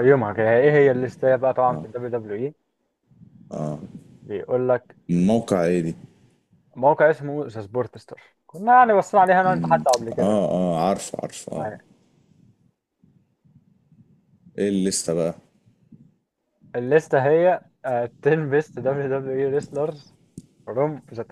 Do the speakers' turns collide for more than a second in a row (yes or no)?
no